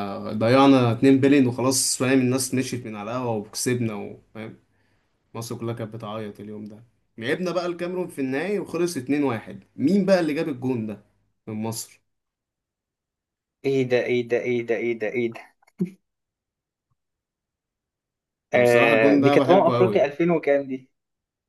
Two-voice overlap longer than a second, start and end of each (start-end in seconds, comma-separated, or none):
18.5-20.1